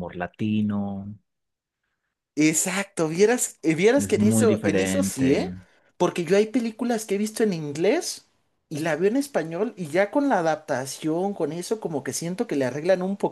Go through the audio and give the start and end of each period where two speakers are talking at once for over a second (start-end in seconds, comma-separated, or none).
4.0-5.5